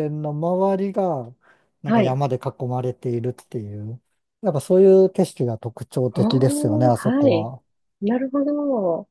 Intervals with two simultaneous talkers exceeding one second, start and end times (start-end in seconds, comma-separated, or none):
6.2-7.5